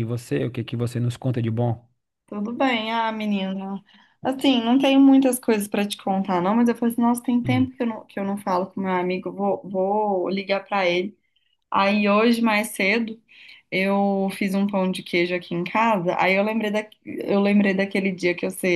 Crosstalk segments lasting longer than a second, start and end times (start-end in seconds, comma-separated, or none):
none